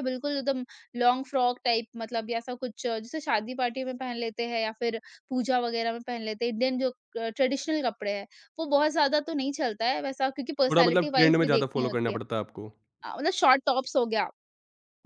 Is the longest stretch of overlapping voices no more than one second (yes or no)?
no